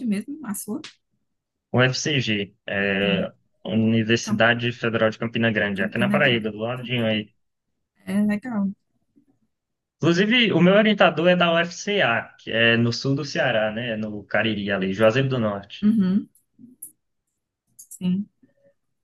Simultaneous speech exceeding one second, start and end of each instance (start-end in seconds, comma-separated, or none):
5.7-7.1